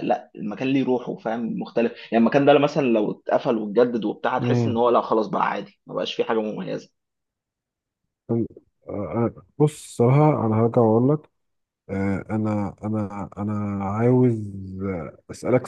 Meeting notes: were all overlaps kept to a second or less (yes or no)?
yes